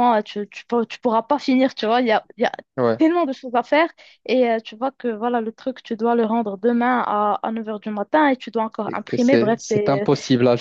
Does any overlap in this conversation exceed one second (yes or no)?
yes